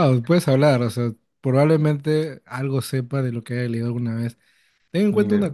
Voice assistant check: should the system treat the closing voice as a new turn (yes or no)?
no